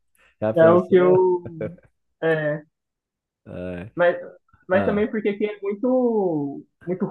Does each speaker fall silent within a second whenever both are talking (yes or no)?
yes